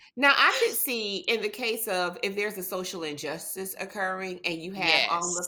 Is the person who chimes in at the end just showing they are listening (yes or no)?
yes